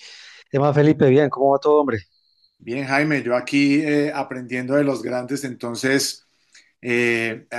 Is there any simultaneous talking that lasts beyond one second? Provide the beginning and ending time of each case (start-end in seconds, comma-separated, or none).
none